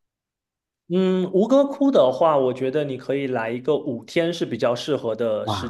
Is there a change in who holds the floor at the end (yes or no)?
yes